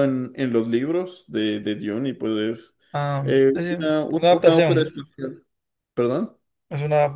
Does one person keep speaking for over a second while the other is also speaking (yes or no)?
yes